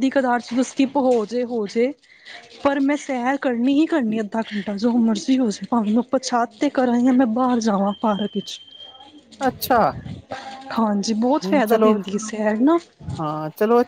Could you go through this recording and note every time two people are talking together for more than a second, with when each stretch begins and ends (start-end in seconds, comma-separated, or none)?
none